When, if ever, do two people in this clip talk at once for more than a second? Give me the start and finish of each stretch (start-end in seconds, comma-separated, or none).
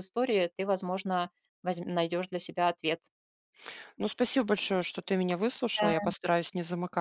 none